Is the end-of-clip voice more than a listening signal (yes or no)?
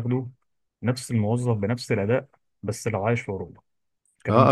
yes